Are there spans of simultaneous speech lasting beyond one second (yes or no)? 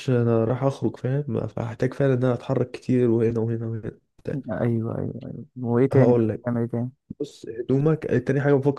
no